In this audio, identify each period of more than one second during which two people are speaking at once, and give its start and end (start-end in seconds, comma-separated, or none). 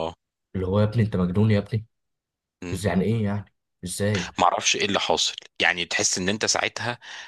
none